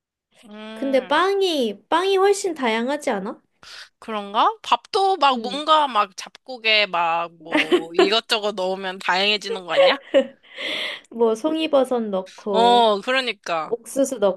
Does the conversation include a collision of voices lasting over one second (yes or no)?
no